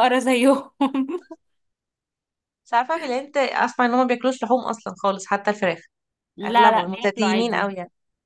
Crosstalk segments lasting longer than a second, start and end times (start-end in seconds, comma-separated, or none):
6.4-7.7